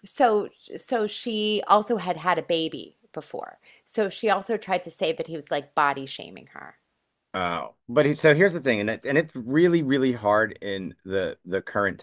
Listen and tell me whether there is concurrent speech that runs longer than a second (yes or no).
no